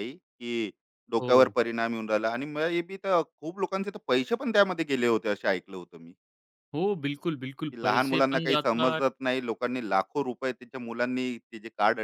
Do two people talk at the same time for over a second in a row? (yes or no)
yes